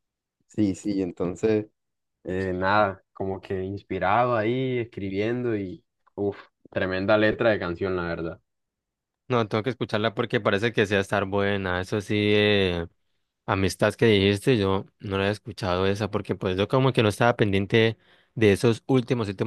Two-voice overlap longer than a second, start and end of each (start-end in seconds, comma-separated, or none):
none